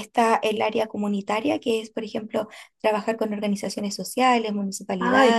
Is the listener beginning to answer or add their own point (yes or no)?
yes